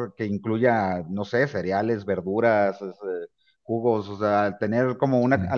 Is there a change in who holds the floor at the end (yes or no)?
no